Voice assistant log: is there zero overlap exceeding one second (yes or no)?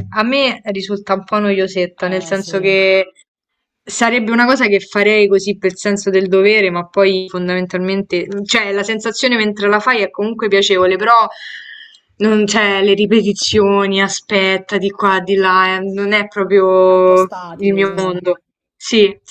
no